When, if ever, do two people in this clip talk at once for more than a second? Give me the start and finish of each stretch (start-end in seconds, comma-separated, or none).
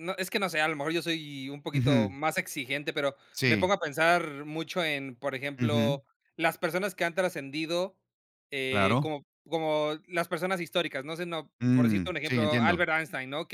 11.6-12.9